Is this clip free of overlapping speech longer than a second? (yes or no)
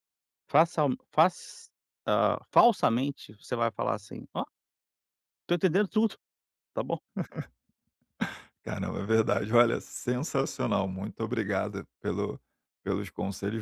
yes